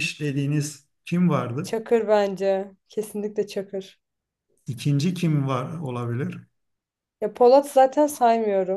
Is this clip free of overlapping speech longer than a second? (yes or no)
yes